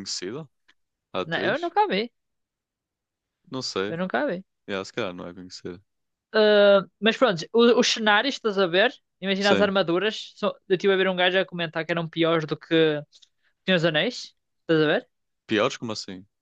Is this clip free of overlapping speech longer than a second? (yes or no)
yes